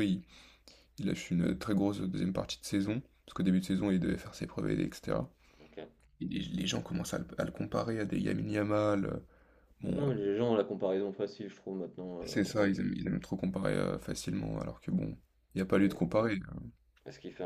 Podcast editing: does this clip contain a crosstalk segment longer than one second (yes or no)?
no